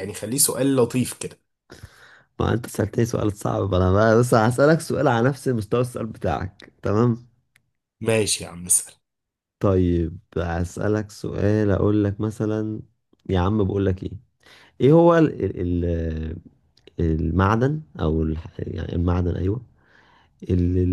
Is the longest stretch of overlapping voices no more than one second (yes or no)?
yes